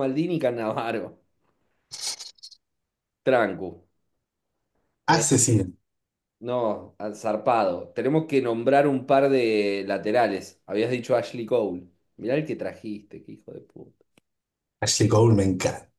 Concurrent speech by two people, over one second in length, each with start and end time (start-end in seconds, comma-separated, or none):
none